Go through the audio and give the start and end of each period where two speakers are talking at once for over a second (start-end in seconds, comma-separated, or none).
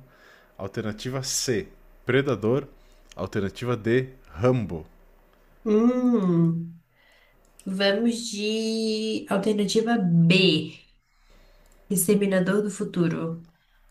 none